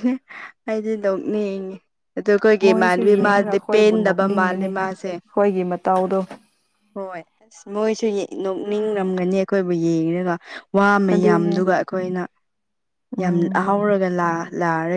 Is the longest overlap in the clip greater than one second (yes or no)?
yes